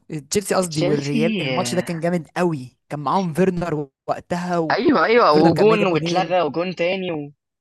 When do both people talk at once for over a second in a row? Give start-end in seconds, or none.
0.7-2.0, 4.7-6.3